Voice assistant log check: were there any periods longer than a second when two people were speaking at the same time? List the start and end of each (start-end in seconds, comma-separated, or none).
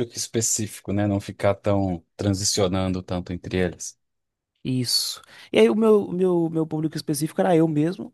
none